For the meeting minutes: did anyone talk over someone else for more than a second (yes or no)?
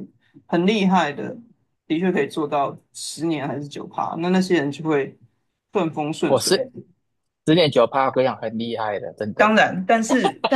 no